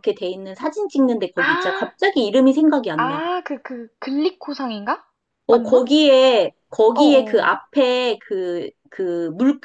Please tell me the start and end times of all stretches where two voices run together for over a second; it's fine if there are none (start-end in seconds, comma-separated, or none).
none